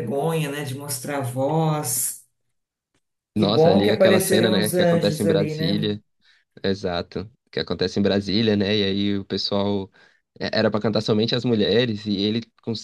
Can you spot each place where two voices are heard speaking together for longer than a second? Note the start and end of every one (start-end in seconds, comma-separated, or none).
3.4-6.0